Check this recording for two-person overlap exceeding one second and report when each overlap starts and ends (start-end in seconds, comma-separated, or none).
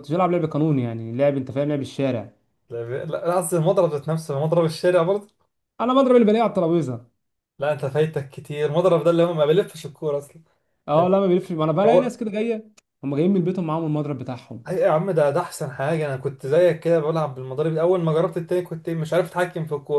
none